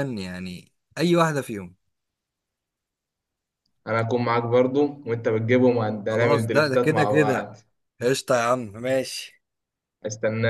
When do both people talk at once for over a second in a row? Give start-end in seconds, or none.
6.1-7.5